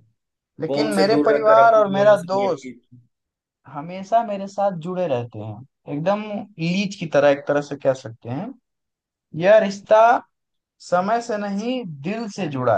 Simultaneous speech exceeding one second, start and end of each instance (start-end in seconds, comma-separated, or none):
0.7-2.7